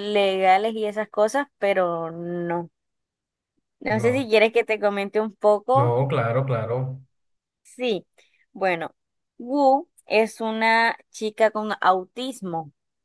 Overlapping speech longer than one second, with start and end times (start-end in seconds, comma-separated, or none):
none